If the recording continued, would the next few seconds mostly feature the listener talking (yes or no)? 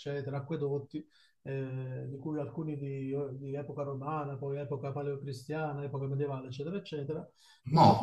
no